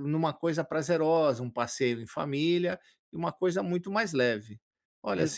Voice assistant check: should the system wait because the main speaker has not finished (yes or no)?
yes